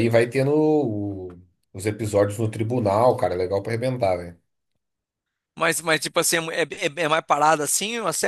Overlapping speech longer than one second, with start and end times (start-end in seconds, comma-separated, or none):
none